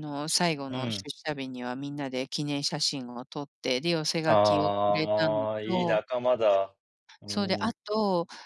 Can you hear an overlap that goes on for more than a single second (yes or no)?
yes